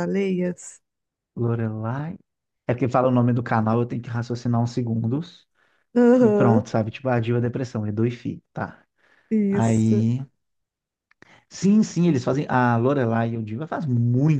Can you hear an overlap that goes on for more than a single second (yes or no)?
no